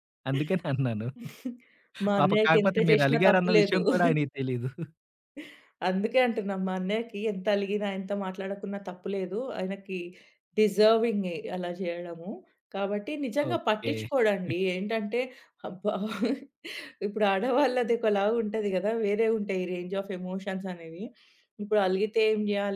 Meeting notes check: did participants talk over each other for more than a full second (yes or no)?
yes